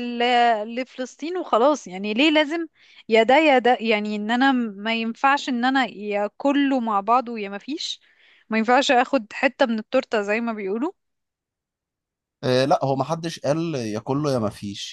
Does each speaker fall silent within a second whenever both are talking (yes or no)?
yes